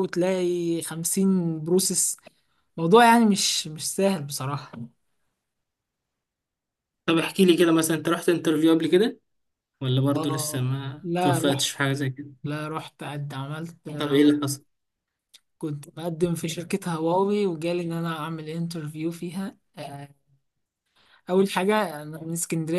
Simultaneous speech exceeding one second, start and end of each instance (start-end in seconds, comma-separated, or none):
10.2-11.6